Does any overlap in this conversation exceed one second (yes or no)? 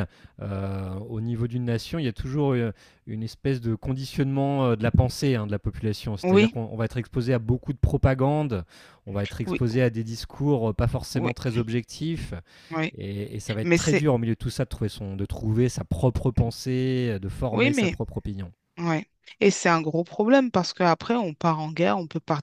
no